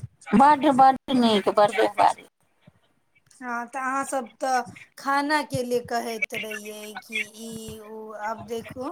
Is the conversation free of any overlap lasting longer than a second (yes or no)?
yes